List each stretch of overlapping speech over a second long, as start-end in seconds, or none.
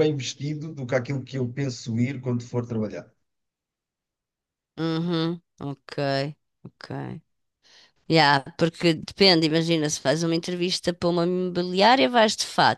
none